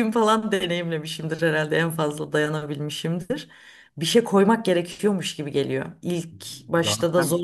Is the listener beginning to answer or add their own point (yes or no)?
no